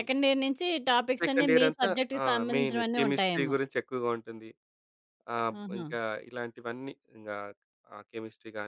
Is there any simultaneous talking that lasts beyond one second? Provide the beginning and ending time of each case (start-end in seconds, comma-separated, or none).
1.2-3.5